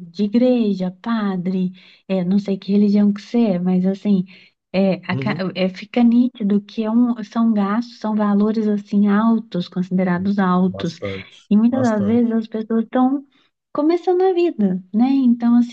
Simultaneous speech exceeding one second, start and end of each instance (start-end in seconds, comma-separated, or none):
none